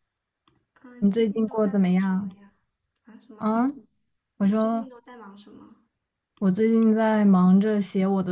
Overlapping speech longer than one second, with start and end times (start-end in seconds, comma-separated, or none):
1.0-2.3